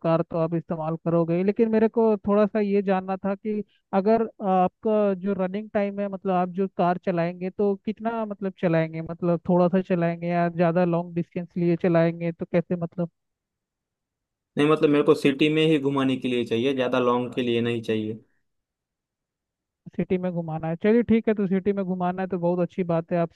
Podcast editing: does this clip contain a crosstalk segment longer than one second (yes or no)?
no